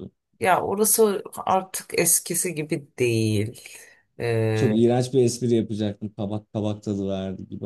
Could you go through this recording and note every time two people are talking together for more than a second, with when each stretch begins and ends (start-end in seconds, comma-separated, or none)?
none